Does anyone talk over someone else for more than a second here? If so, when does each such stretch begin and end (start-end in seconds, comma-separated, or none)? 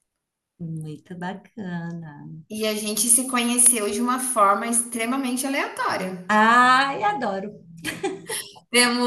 none